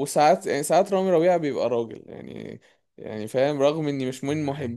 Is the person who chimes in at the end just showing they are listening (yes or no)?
yes